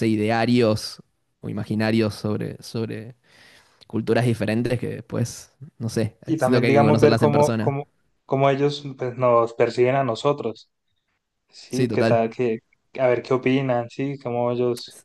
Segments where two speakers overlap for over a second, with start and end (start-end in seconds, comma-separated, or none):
6.2-7.8